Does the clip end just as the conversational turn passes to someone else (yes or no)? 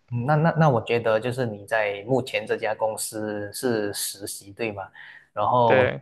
no